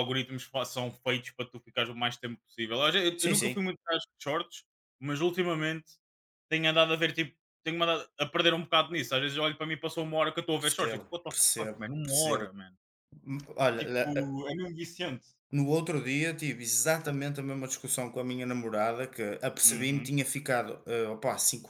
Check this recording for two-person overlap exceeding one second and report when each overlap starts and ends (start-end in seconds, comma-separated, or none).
10.6-12.4